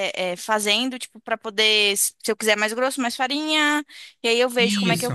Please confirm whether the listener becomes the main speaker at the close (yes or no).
no